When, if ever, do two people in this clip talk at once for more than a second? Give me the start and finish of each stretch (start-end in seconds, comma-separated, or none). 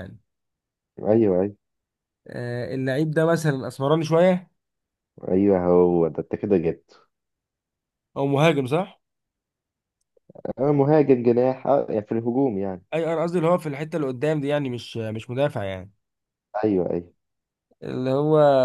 none